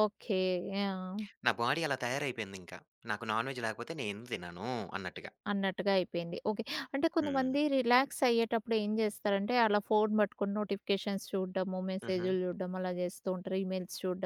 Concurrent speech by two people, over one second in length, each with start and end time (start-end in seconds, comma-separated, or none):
none